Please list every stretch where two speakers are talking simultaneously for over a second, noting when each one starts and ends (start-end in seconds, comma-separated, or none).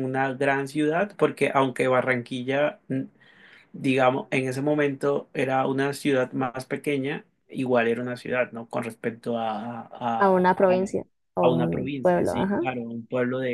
11.4-12.6